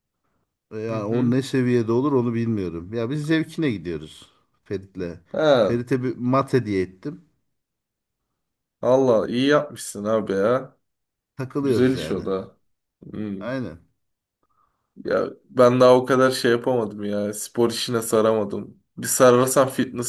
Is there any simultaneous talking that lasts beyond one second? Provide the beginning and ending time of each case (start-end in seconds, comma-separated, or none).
none